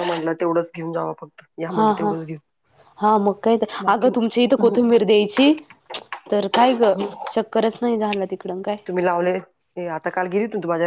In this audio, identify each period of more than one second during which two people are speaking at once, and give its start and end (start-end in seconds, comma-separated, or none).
none